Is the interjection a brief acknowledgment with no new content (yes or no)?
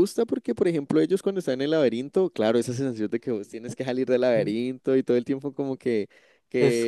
yes